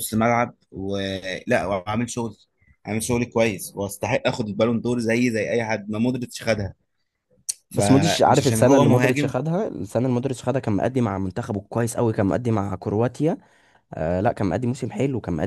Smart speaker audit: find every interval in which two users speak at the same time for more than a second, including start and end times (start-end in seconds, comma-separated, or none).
7.7-9.3